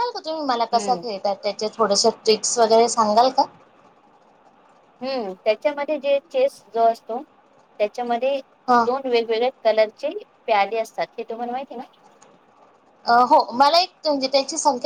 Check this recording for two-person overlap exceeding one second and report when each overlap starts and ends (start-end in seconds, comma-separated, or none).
none